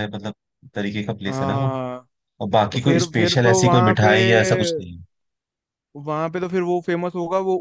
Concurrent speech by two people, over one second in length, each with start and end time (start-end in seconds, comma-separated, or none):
2.7-4.1